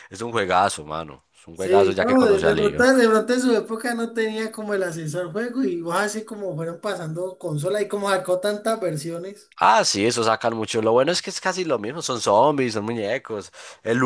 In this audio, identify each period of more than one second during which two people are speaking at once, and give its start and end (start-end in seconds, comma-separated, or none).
1.5-2.9